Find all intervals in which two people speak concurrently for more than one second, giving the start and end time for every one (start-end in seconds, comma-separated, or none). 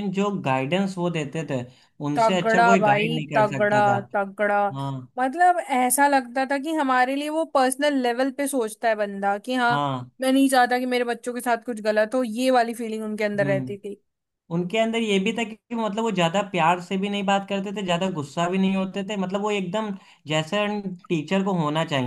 2.1-4.0